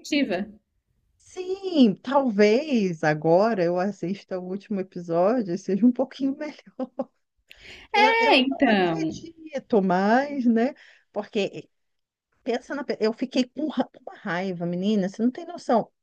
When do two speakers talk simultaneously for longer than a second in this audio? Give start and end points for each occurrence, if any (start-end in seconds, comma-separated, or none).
8.0-9.2